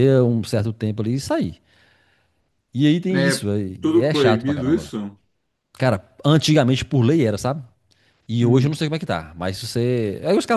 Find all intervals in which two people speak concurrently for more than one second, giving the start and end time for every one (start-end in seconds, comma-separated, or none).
3.1-4.9